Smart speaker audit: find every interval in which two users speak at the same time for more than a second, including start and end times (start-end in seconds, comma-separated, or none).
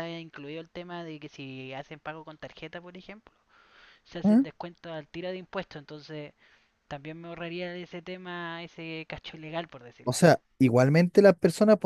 none